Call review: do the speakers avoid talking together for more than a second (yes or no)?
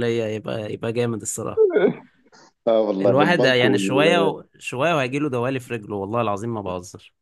no